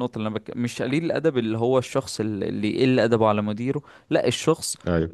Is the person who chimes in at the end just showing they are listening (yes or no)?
yes